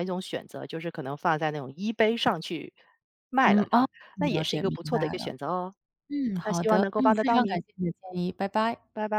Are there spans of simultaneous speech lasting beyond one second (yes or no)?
yes